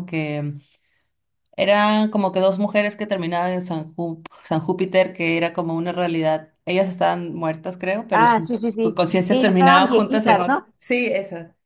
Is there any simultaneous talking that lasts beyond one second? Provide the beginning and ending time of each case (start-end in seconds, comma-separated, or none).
8.1-10.7